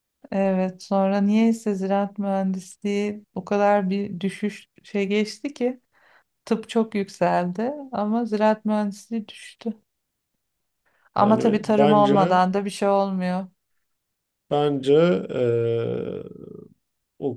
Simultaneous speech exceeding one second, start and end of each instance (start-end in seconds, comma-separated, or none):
11.2-12.4